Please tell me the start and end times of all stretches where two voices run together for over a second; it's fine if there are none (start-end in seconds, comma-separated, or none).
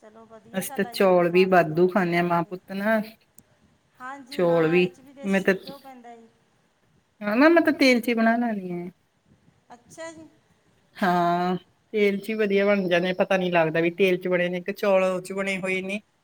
0.6-2.6